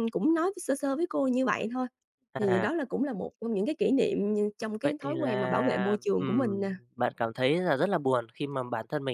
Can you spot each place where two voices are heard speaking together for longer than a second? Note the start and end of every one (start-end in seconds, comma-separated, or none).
4.8-6.7